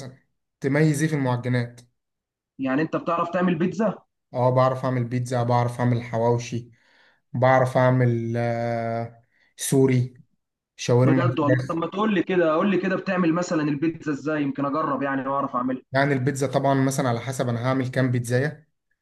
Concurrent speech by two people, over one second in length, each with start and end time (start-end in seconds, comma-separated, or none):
none